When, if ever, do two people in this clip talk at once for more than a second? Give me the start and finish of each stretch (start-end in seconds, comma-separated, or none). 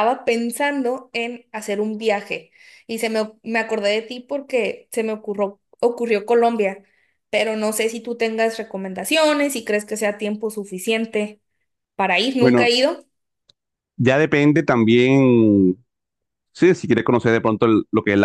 none